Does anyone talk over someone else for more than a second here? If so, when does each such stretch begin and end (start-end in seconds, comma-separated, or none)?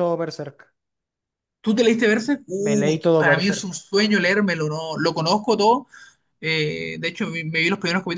2.6-3.8